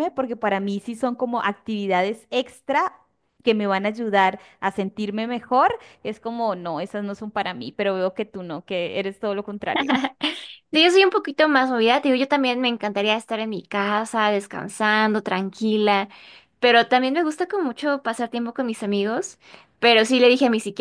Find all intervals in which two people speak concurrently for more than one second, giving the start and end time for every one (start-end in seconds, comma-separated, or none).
none